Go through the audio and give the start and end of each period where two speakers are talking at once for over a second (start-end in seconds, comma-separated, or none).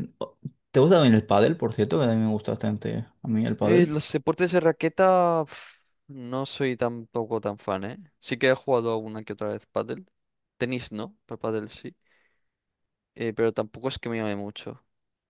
none